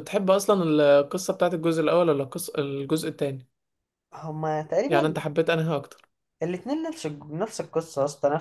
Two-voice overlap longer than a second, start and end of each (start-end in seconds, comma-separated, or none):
none